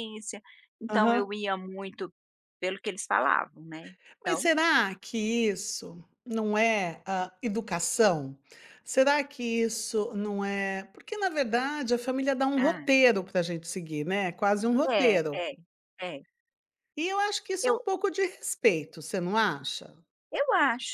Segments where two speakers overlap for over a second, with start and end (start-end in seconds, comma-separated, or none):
none